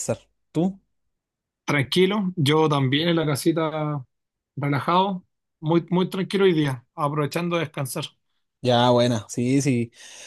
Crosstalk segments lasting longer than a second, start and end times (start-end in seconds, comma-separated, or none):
none